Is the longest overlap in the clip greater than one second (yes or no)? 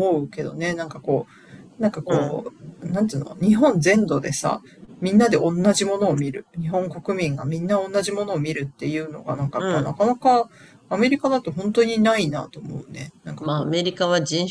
no